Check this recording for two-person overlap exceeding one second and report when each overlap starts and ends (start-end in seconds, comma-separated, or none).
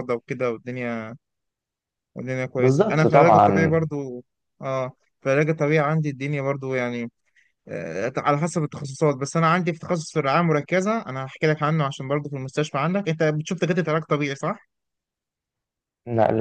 2.6-3.8